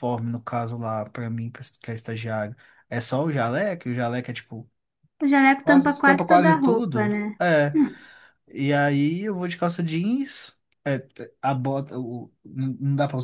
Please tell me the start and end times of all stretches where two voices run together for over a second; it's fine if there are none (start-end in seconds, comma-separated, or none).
5.6-7.2